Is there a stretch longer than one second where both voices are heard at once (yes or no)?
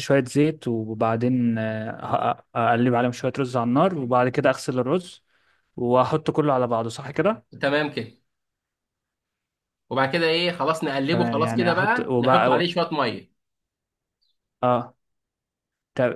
yes